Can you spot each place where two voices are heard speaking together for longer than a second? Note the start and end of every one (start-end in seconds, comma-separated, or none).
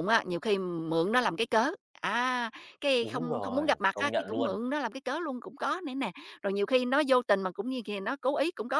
3.0-4.5